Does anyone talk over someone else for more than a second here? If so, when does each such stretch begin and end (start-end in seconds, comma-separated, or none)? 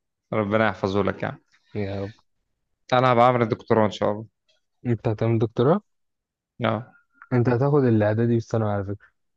none